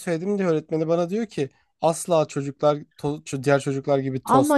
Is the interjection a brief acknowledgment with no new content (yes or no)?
no